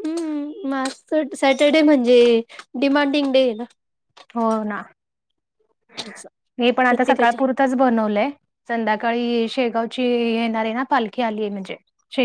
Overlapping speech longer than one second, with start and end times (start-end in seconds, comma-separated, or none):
none